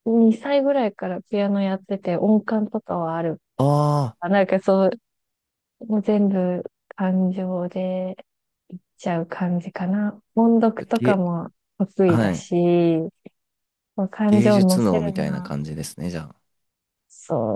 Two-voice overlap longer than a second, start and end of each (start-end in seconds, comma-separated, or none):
14.2-15.5